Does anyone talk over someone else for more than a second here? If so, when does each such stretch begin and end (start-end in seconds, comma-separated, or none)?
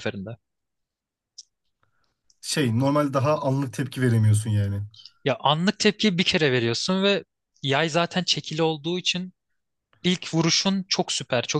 none